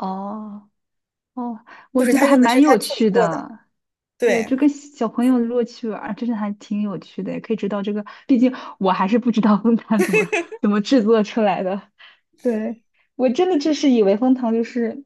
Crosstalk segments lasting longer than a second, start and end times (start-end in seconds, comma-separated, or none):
2.0-3.5